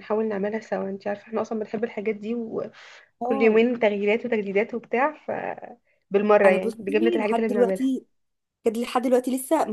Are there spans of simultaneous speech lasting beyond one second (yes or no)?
yes